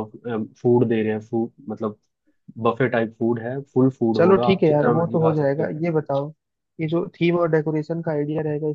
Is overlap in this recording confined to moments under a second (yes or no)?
no